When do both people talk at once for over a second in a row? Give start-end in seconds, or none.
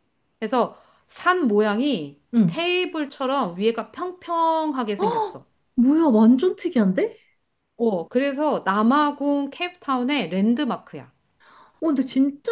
none